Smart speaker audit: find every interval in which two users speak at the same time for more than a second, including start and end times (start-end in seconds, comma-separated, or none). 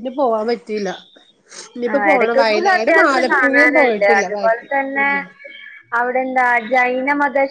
1.9-5.1